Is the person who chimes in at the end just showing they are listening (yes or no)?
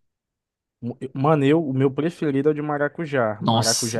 no